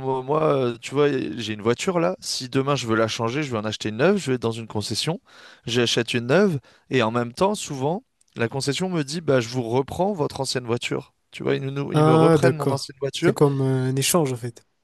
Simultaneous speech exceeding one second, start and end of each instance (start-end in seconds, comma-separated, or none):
11.9-13.3